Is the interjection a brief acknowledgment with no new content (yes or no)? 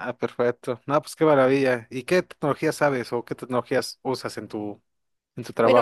no